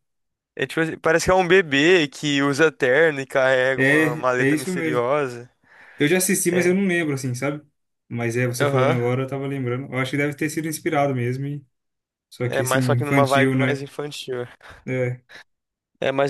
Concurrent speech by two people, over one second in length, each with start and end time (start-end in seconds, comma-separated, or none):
3.8-5.0, 12.5-13.8